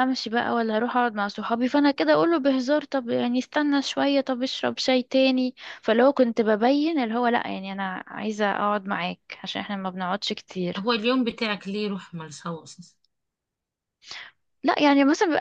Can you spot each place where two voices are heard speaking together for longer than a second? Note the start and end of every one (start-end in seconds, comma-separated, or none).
none